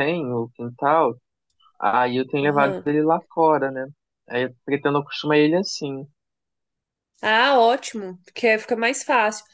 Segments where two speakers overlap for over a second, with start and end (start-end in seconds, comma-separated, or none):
none